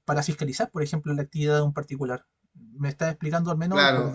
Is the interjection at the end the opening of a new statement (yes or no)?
yes